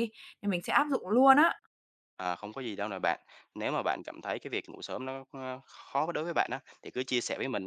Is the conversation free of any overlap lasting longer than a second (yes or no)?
yes